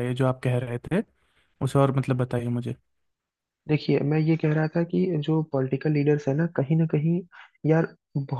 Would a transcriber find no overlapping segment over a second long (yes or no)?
yes